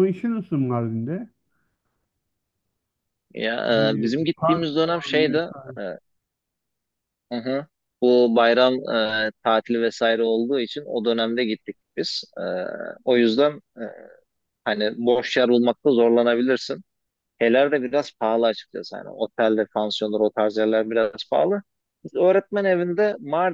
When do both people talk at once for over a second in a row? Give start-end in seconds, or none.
3.7-5.8